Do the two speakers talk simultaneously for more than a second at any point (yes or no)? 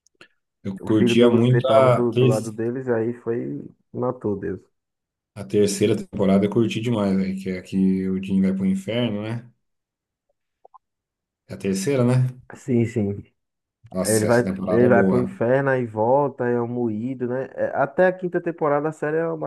yes